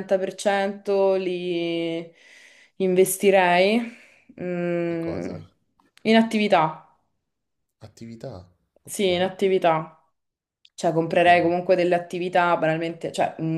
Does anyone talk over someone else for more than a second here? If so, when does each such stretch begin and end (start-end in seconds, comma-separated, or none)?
none